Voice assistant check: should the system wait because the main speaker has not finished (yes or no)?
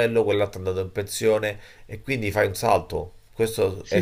no